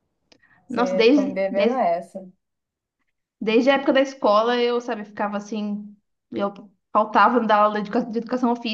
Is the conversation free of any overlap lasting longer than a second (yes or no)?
no